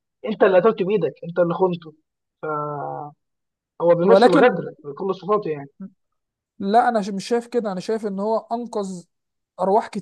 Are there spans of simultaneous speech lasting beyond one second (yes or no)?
no